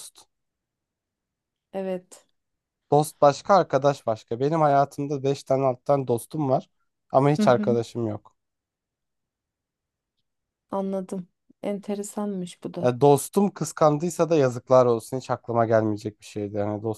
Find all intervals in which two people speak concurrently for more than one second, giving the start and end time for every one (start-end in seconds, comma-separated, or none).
none